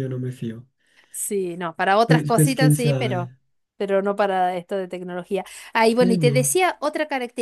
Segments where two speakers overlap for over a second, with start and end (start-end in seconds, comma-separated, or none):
2.0-3.3